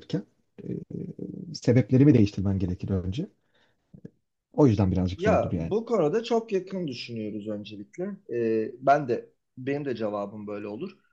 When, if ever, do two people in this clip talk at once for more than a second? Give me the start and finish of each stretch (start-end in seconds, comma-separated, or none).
none